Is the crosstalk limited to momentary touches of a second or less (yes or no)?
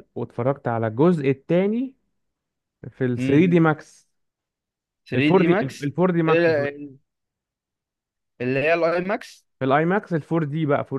no